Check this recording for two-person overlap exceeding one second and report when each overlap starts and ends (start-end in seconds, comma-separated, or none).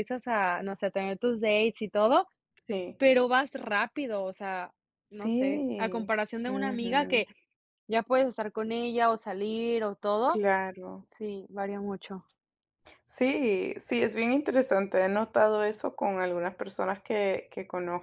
5.1-7.2